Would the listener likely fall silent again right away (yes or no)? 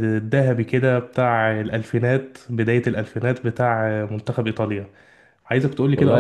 no